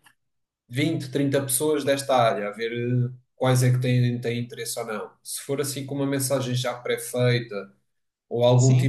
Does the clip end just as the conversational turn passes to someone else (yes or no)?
no